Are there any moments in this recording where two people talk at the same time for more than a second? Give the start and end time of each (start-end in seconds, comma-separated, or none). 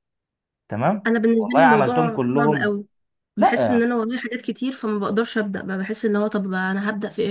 1.1-2.7